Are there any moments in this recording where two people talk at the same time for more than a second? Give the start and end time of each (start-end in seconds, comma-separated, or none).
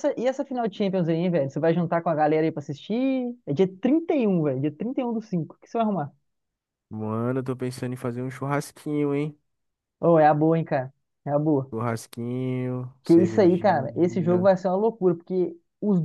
13.0-14.5